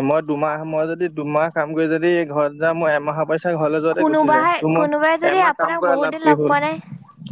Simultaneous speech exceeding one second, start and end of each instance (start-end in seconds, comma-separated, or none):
4.0-6.6